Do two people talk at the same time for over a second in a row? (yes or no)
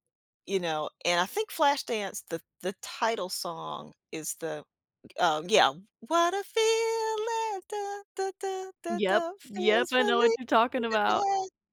yes